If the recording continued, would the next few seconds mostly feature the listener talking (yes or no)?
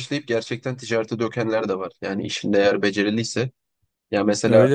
no